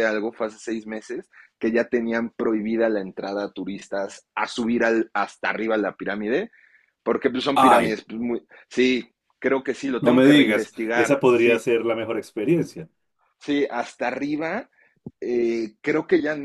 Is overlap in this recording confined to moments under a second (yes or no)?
no